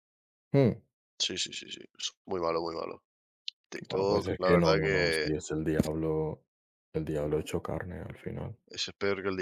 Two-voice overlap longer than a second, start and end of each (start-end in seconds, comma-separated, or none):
3.9-5.3